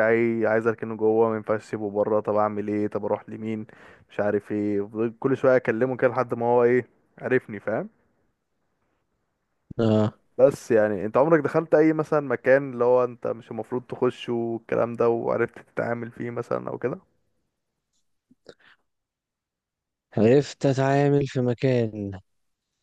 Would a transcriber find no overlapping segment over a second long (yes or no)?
yes